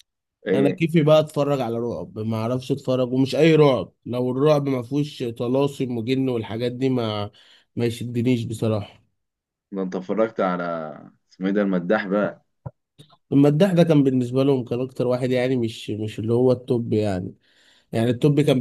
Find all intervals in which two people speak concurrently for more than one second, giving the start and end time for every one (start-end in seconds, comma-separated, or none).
none